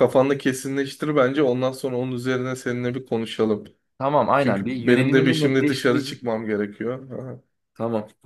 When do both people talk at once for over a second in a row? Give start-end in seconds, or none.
4.4-6.2